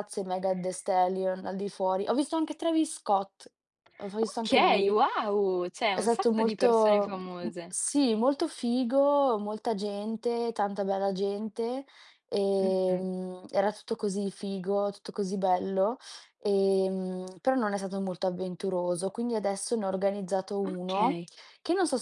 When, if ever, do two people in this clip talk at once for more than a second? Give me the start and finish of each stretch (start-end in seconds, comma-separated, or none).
5.9-7.8